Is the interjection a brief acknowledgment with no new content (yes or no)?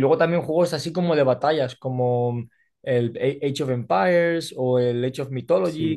no